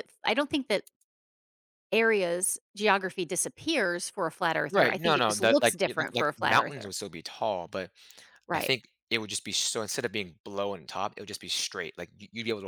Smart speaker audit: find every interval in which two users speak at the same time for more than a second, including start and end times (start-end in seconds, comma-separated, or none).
4.7-6.9